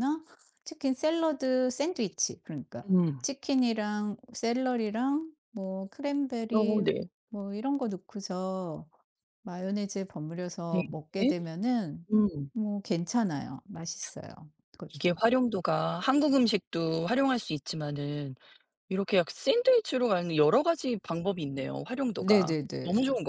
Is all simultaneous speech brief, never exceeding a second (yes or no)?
yes